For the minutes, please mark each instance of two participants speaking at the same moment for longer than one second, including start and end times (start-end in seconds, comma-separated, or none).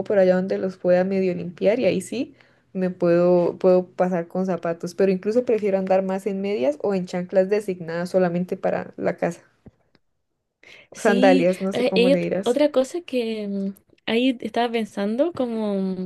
11.0-12.6